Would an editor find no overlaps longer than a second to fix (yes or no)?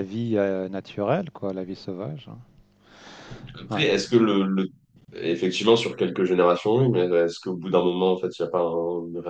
yes